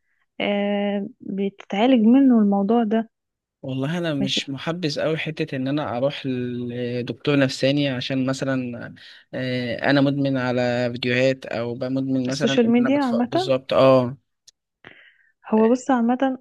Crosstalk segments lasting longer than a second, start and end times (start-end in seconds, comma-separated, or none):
12.3-13.5